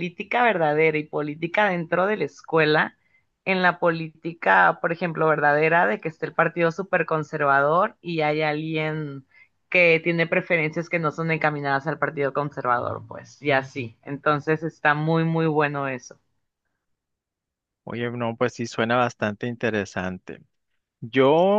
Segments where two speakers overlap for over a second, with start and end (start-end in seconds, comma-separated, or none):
none